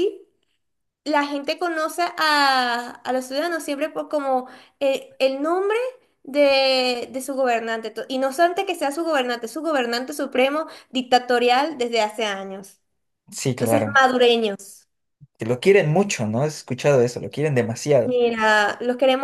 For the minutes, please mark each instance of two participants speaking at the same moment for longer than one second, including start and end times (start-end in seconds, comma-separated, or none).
none